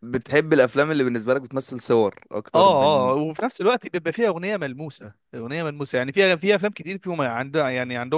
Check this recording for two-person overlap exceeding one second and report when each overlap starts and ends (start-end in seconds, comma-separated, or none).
none